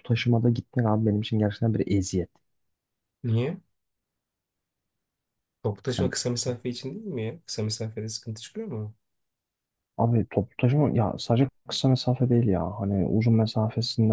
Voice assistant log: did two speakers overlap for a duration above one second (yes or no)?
no